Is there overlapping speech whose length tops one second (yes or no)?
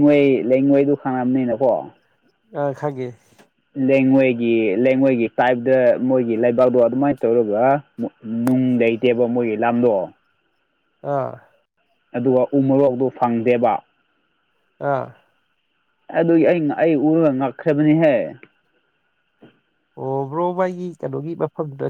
no